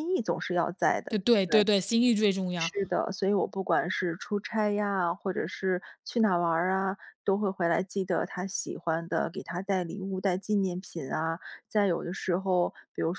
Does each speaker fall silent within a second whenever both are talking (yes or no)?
yes